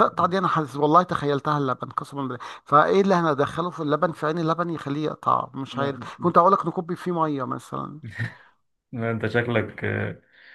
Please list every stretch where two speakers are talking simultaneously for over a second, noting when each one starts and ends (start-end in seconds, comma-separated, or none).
none